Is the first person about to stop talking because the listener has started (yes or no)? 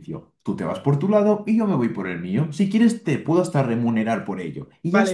yes